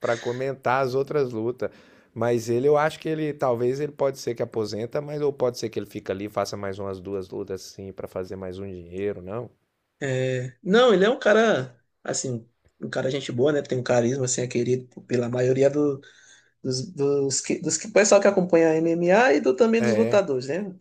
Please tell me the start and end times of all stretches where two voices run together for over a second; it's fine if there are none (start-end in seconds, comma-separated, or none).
none